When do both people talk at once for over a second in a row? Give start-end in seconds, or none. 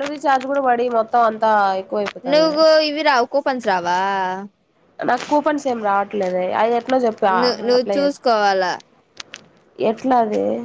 none